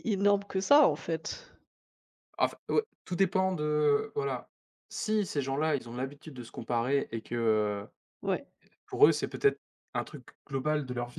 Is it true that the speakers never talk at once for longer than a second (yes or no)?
yes